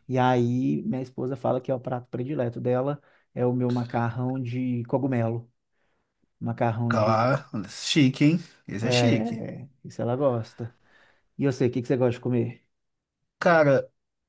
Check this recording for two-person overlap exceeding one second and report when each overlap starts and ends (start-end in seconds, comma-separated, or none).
none